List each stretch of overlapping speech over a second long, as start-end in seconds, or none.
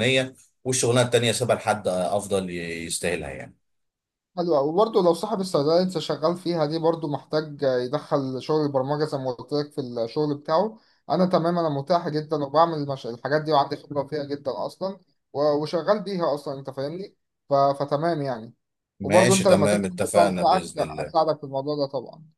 19.0-21.1